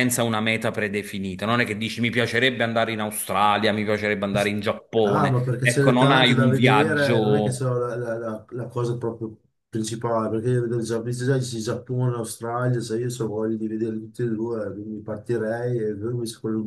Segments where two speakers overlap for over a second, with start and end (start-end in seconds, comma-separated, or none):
5.0-7.7